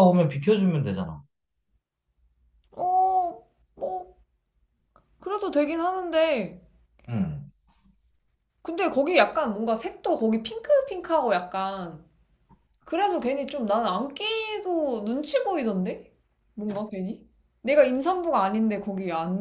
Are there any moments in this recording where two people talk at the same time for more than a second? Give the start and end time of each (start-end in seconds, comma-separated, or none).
none